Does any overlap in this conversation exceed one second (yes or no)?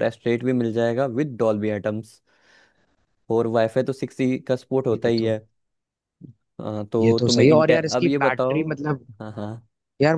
yes